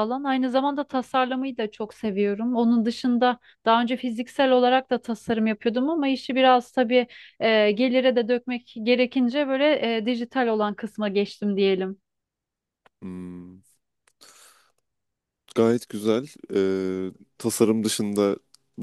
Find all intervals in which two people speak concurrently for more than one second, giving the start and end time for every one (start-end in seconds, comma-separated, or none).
none